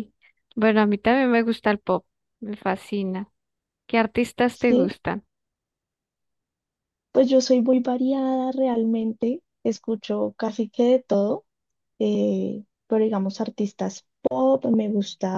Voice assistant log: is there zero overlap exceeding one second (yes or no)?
yes